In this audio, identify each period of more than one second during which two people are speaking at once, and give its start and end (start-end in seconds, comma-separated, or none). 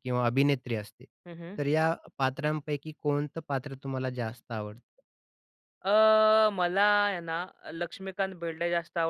none